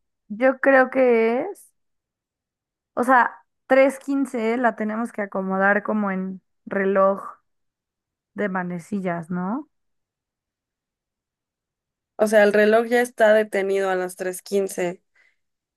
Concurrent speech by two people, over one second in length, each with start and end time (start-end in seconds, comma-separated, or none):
none